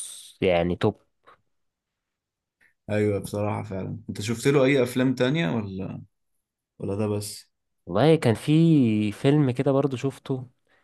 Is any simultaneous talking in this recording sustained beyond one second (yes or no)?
no